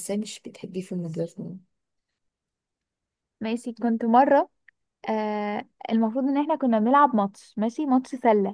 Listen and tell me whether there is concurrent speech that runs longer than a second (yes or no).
no